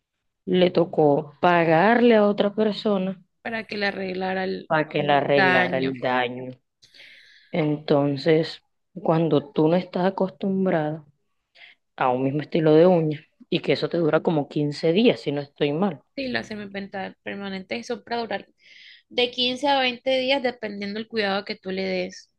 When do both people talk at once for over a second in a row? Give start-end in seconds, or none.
4.7-6.0